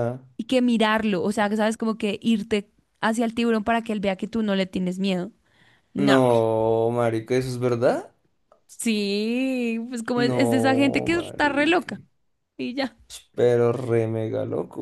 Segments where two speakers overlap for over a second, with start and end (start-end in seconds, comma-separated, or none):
10.2-11.9